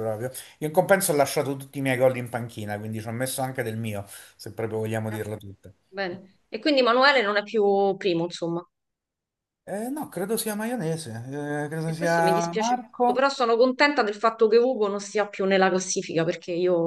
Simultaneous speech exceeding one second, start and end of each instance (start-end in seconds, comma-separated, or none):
11.8-13.3